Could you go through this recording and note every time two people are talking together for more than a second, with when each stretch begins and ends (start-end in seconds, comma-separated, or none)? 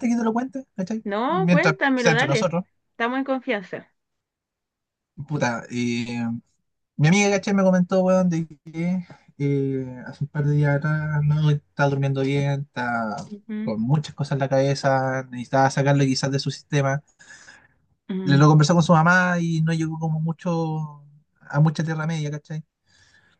1.1-2.5